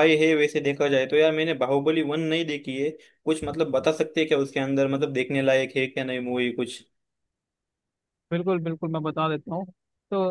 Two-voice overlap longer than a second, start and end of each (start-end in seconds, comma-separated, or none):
none